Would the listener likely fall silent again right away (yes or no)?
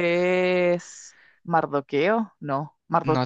no